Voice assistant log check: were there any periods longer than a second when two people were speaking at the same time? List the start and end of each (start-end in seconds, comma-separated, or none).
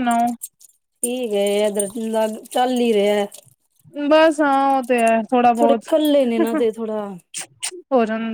none